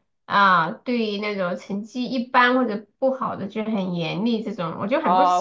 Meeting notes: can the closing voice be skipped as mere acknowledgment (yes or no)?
no